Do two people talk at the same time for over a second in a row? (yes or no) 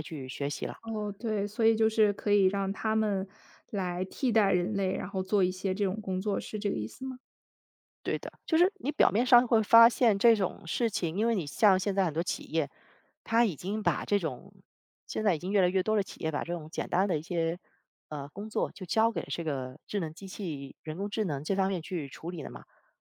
no